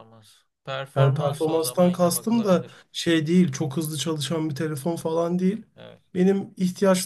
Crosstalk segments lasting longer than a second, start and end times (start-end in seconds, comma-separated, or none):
1.0-2.8